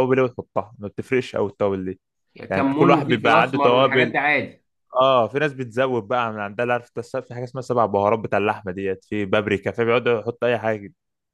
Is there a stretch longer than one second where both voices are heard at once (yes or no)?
yes